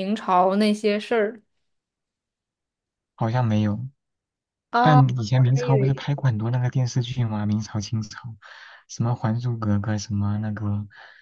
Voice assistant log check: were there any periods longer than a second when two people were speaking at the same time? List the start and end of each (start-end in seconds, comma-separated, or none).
4.8-6.0